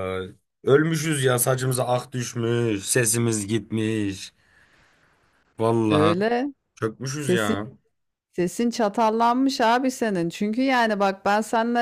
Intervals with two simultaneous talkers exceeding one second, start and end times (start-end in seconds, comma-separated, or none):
none